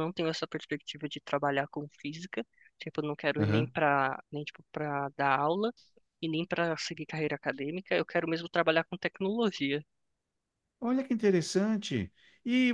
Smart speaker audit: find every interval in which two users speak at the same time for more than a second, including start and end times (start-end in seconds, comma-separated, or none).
none